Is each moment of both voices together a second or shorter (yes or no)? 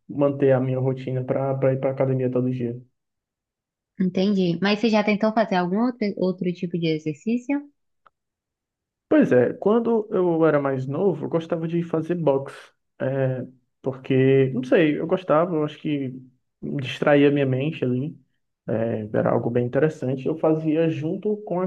yes